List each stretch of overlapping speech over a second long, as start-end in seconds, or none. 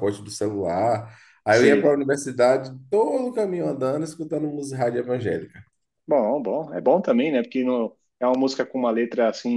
none